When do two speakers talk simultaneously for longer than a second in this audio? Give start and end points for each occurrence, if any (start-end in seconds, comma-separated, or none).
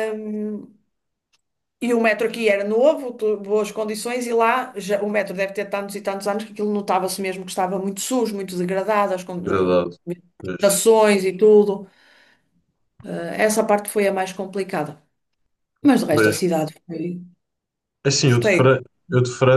none